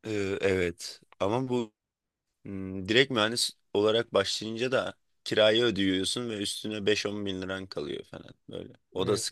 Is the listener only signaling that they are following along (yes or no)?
no